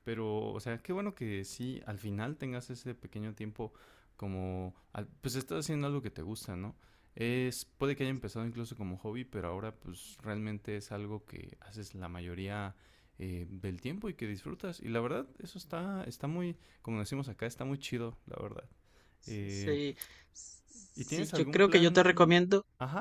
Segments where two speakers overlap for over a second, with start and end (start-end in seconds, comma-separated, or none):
20.9-22.4